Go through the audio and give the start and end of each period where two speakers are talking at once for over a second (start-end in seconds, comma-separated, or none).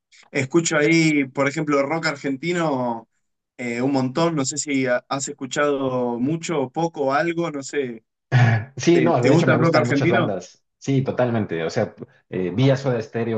8.9-10.3